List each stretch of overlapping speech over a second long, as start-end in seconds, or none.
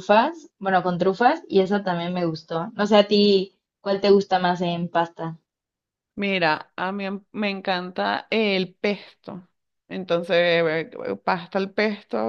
none